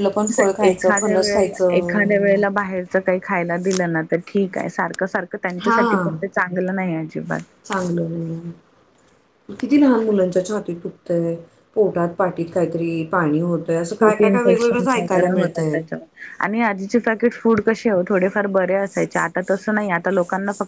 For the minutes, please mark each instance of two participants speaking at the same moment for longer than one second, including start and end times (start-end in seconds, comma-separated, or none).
14.0-15.8